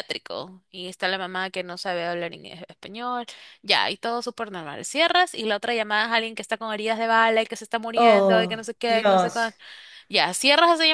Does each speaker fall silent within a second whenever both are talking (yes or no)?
no